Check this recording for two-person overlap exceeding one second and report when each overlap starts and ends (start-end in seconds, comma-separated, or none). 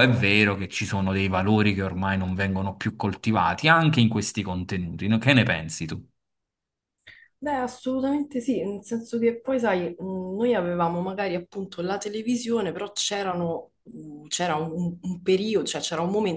none